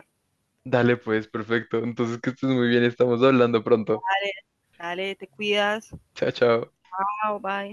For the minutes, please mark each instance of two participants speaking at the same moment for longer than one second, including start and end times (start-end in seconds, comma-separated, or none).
none